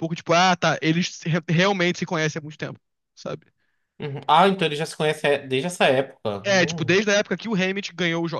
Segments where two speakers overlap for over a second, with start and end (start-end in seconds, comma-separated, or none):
none